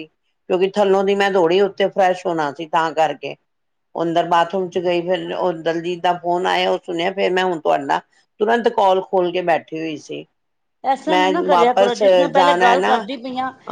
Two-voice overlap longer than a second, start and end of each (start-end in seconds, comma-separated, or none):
11.1-13.0